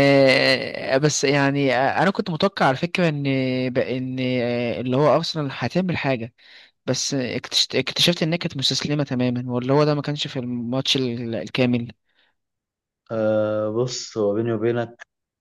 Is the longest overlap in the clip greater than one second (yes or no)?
no